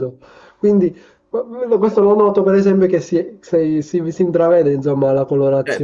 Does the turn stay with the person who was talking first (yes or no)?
no